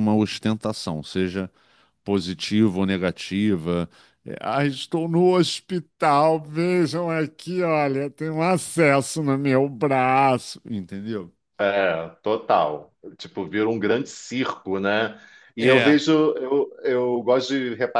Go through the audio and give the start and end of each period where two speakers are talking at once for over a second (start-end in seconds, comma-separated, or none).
none